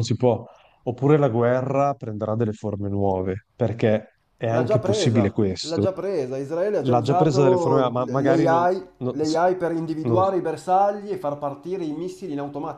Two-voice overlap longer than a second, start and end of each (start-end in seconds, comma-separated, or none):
4.5-5.9, 6.8-9.2